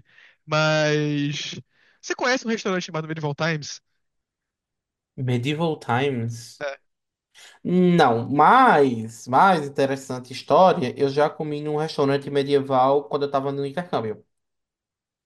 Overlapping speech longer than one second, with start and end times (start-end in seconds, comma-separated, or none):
none